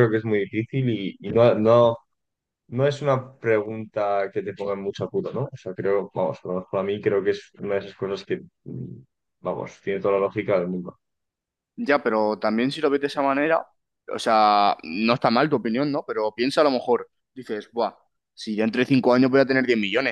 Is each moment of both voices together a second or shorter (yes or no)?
yes